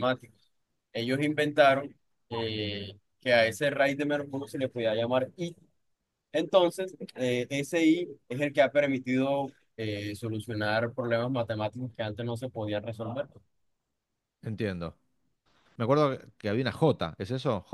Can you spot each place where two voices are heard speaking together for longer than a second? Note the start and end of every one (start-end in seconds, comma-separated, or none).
none